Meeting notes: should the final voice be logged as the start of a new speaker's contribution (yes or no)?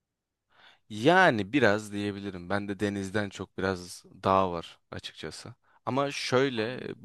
no